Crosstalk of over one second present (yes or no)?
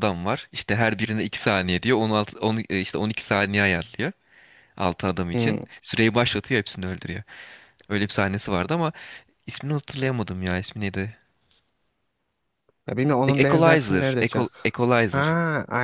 yes